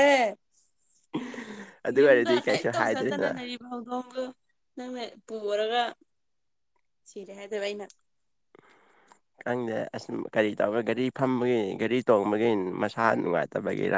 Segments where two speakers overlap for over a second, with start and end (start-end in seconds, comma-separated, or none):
2.0-3.3